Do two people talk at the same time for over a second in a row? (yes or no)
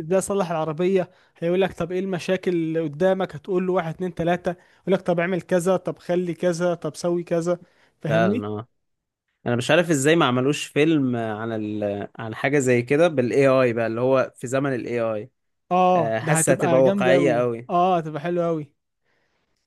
yes